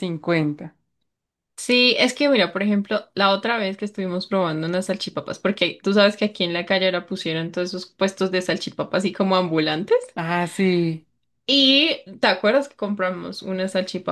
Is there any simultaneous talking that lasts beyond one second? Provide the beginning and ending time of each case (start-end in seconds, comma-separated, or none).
none